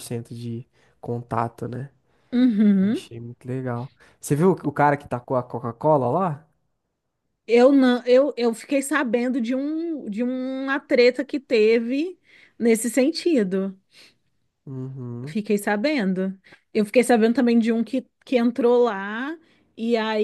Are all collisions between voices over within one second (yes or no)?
yes